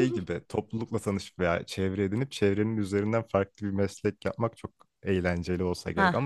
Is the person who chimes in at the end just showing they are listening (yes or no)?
yes